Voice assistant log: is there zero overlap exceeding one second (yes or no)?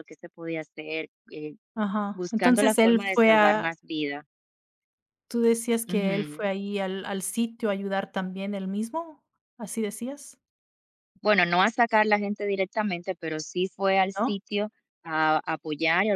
no